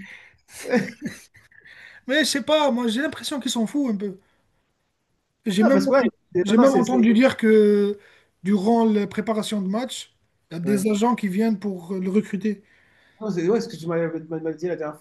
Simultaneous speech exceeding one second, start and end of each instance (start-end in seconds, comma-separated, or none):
5.6-7.1